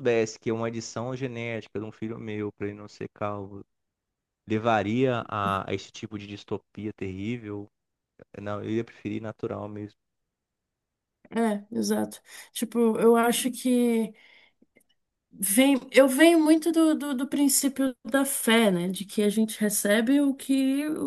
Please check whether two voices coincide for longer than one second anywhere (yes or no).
no